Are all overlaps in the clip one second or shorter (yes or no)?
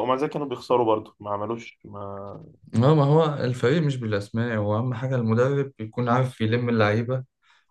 yes